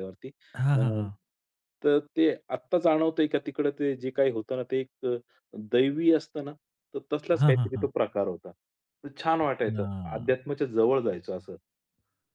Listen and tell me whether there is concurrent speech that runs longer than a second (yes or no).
no